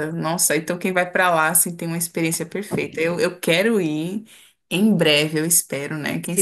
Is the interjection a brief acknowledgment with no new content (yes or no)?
no